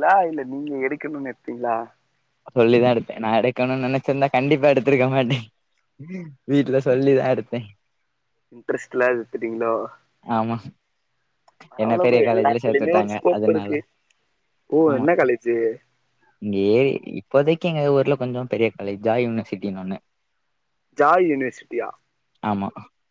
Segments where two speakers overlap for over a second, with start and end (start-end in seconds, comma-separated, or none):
11.8-13.7